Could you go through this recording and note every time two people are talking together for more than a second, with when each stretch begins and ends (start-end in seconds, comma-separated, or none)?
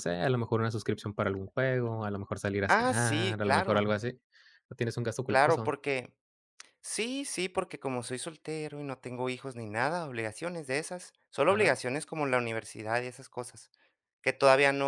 2.7-3.9